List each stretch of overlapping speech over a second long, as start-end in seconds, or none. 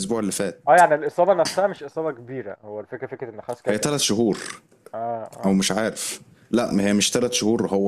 none